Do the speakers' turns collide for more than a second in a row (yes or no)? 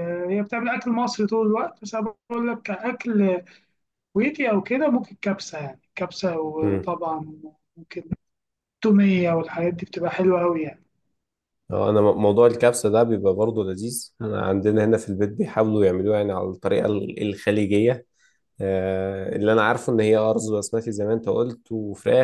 no